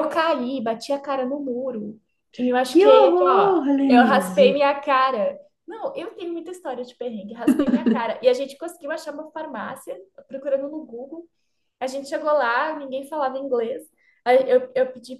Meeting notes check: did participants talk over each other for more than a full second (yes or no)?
yes